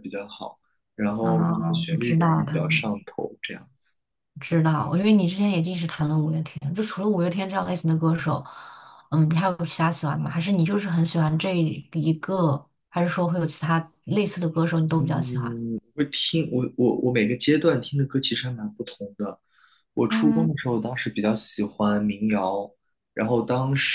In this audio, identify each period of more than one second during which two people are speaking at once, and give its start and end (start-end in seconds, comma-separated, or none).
1.2-2.9